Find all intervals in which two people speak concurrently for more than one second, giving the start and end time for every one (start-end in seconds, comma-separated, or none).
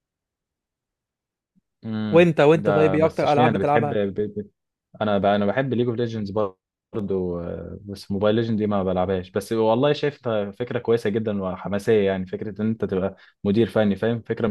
2.1-4.0